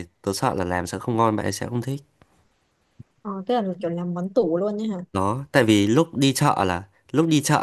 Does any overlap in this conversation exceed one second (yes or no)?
no